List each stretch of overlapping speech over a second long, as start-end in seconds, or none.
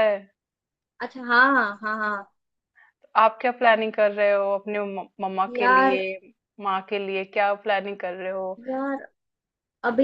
none